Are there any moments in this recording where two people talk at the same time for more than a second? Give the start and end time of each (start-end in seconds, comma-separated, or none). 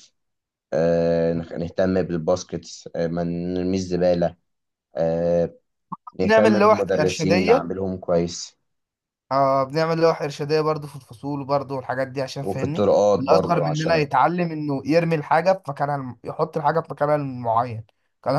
6.2-7.7, 12.4-14.1